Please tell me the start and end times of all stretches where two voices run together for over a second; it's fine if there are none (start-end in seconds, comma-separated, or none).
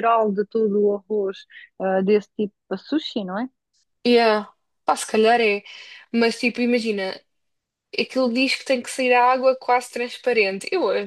none